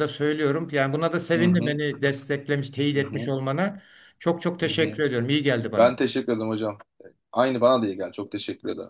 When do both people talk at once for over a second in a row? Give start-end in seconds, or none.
none